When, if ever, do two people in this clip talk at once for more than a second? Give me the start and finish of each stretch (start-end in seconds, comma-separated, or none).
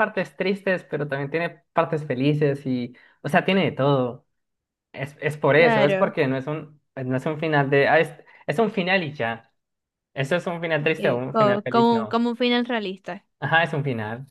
11.0-12.2